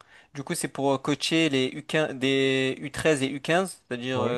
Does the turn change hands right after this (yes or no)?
no